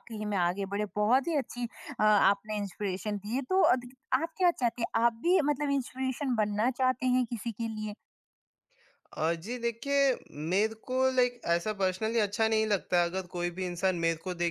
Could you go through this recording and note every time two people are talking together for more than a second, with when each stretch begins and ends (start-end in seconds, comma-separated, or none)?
none